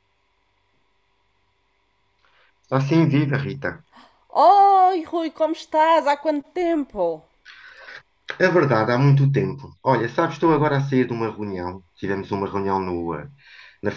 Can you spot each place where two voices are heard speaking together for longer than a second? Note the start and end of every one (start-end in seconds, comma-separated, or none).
none